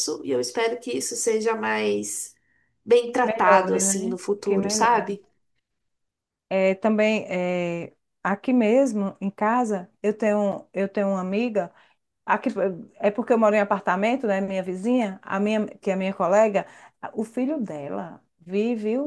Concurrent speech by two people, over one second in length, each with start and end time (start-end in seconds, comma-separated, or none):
3.1-5.2